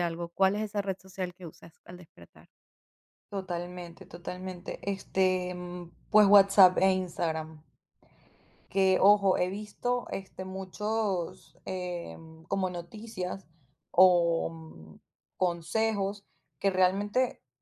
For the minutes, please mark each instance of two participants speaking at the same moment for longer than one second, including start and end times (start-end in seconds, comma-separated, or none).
none